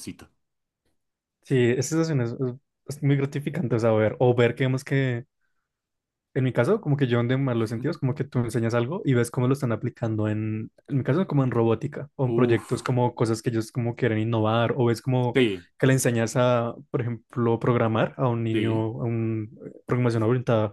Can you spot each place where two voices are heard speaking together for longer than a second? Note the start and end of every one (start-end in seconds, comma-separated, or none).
none